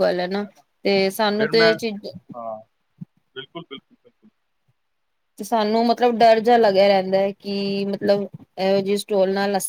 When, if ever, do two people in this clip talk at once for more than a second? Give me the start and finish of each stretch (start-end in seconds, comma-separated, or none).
none